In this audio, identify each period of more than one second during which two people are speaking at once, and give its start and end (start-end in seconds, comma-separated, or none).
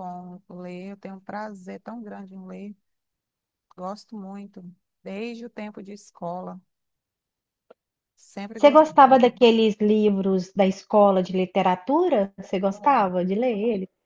none